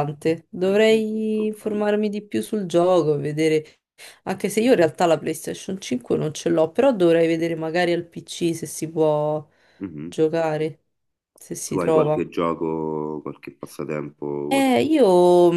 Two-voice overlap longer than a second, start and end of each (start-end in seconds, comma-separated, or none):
0.6-1.9